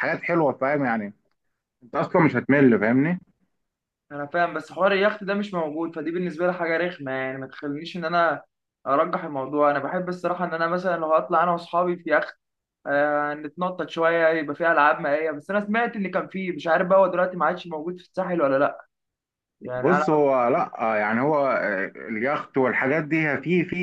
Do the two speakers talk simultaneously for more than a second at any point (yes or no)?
no